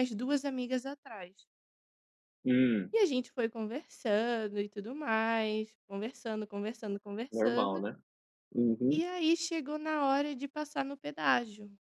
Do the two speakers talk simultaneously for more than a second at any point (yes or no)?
no